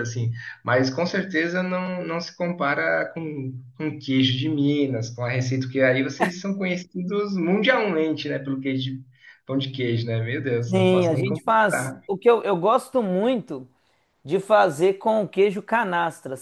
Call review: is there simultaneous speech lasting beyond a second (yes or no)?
yes